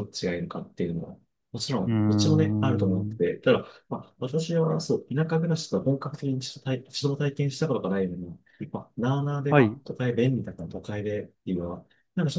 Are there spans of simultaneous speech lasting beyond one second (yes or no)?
yes